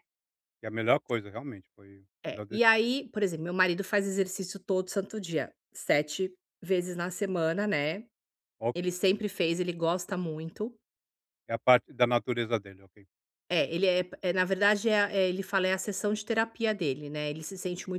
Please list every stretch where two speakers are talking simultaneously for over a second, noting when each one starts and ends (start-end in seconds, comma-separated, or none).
none